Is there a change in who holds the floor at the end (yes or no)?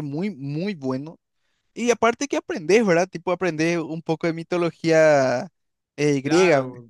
yes